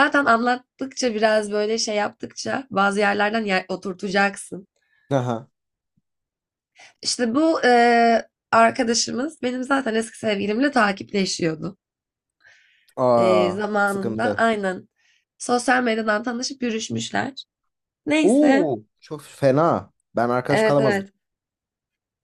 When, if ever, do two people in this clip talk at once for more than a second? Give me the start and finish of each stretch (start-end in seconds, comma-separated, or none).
13.2-14.4